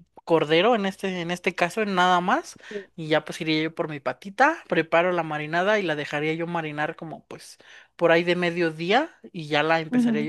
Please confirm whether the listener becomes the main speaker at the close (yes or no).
no